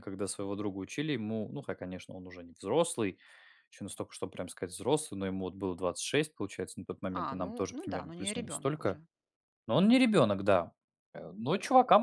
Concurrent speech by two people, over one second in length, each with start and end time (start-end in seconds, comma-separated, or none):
7.2-9.0